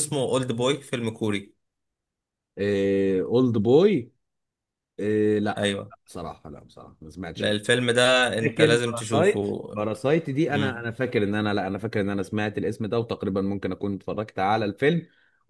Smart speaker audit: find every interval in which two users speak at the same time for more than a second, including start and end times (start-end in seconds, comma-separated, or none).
8.4-9.6